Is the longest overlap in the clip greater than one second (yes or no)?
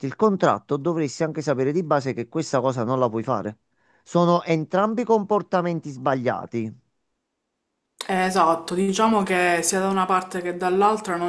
no